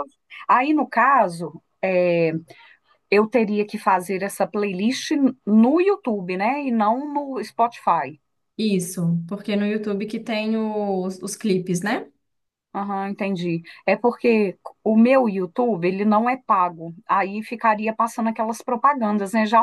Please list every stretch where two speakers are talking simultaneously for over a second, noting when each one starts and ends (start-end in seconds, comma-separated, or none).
none